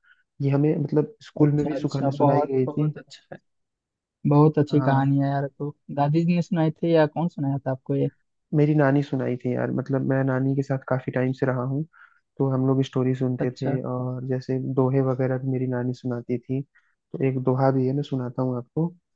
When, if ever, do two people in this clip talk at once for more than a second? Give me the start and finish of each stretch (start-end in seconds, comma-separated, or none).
1.4-2.9